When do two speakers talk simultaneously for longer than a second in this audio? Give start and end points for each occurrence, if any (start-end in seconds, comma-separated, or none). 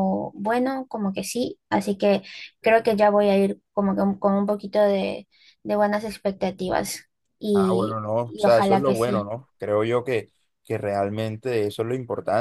7.5-9.3